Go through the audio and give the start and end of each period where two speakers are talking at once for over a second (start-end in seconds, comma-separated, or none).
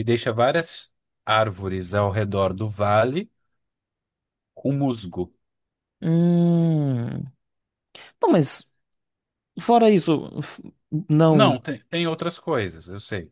none